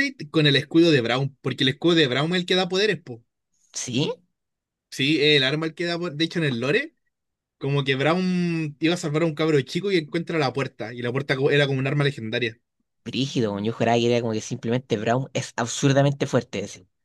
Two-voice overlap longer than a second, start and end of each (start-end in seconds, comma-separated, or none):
none